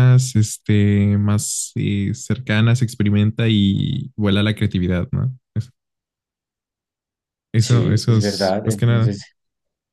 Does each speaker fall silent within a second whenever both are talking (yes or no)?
no